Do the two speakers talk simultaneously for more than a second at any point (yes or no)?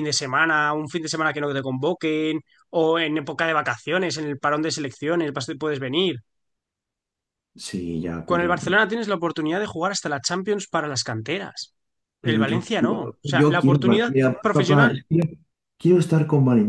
yes